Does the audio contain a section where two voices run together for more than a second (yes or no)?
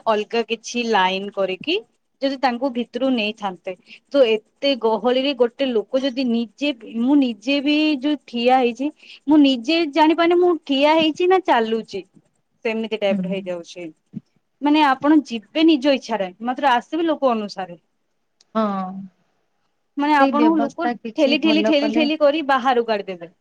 yes